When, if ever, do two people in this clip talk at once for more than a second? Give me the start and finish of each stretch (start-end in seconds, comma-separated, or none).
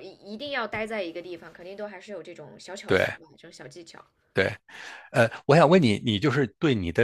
none